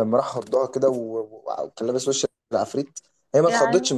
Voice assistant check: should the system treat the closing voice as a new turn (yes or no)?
no